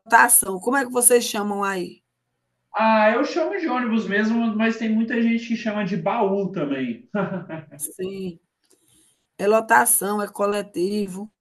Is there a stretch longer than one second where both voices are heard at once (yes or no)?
no